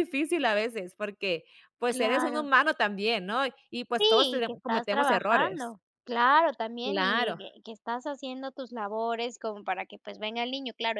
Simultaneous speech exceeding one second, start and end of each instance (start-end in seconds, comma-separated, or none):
3.9-5.7